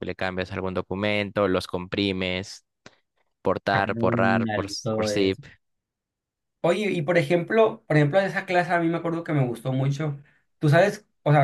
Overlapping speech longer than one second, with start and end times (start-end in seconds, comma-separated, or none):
3.7-5.4